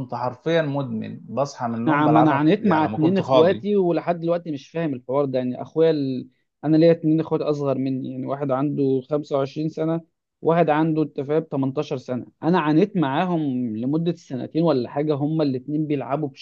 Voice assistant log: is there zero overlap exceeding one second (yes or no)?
no